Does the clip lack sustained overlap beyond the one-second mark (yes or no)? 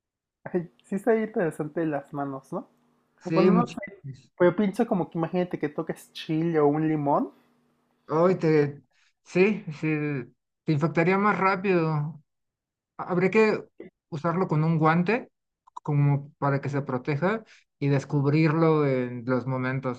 yes